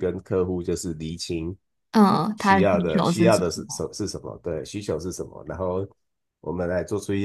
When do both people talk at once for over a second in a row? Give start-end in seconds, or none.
2.4-3.9